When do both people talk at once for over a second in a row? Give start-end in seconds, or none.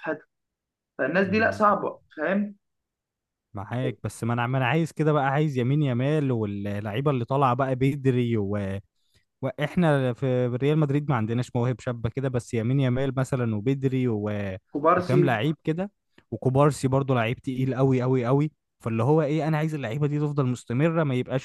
none